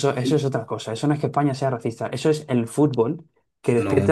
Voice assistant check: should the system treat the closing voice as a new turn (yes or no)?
no